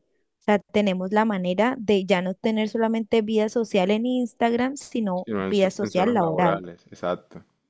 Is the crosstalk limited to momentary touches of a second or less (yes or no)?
no